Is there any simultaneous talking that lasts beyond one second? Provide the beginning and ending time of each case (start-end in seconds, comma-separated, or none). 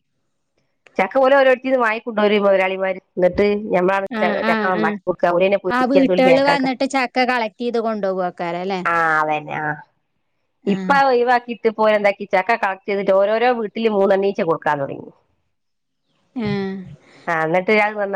4.5-6.7